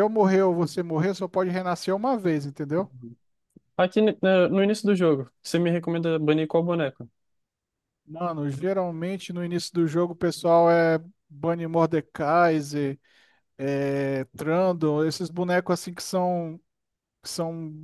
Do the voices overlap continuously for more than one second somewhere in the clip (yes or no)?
no